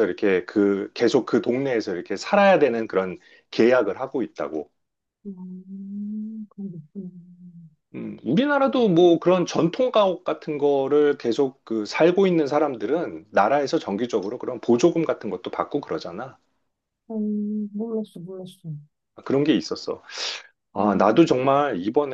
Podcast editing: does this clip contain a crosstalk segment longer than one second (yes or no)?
no